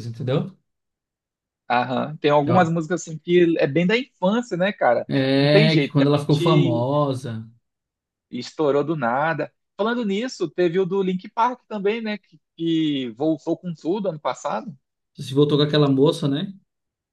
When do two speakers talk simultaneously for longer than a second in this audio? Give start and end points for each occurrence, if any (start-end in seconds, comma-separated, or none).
5.1-6.9